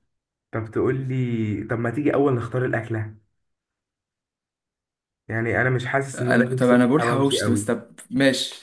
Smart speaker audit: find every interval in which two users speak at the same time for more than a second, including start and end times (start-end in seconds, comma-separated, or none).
6.2-7.7